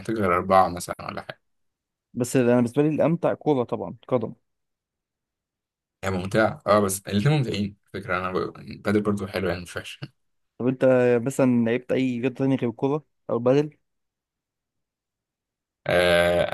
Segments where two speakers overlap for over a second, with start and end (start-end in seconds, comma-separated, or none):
none